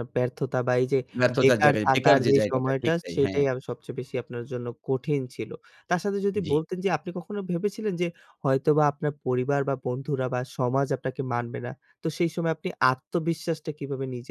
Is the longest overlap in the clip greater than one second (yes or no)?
yes